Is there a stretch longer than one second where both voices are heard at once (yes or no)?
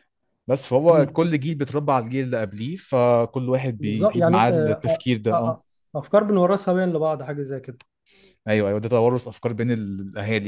yes